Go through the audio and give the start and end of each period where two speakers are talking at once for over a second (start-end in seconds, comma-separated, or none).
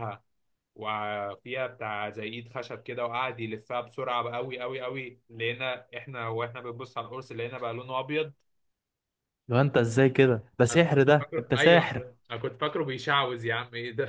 10.7-12.1